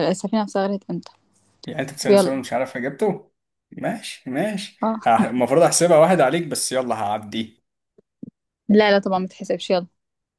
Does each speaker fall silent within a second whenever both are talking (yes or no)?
yes